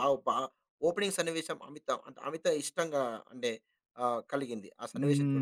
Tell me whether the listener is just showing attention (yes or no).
no